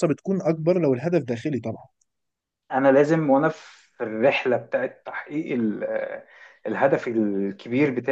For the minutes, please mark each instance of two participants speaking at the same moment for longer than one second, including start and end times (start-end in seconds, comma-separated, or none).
none